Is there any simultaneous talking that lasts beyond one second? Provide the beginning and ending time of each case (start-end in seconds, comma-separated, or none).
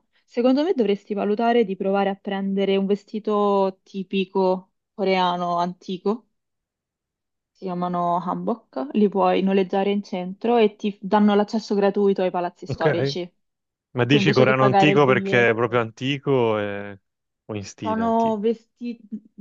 13.9-15.8